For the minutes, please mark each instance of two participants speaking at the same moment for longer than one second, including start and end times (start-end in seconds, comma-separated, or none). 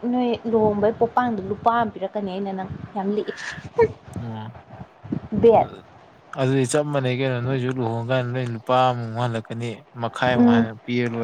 none